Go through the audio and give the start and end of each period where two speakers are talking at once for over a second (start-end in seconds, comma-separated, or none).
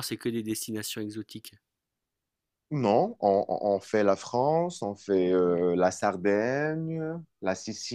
none